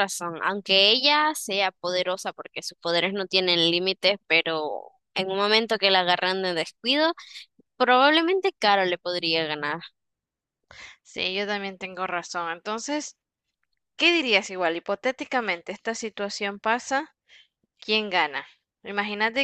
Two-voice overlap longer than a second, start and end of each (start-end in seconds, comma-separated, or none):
none